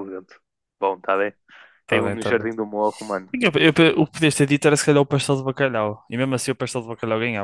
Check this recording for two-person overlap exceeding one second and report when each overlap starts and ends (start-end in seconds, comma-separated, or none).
none